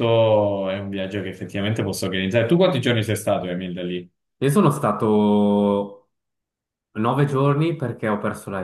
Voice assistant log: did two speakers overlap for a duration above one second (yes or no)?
no